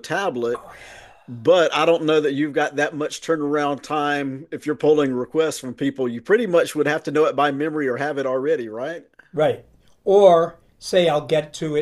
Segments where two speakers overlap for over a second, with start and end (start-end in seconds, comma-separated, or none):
none